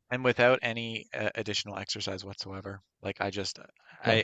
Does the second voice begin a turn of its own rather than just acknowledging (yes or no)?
no